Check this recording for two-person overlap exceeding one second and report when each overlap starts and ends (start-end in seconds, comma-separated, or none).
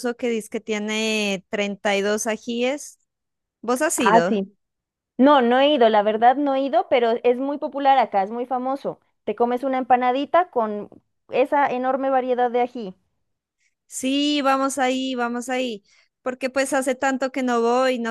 none